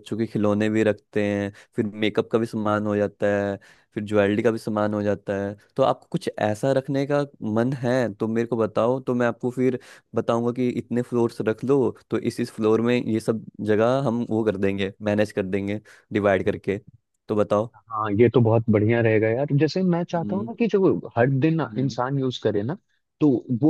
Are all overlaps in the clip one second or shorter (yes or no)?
yes